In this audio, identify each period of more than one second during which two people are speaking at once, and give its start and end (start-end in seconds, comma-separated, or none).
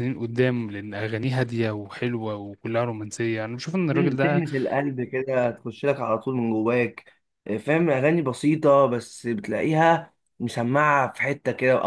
none